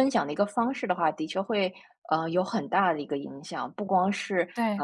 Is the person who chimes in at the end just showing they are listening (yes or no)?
yes